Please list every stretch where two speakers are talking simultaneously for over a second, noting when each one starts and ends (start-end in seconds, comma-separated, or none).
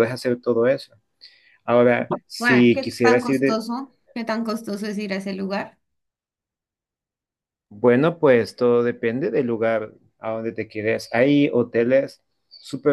2.4-3.6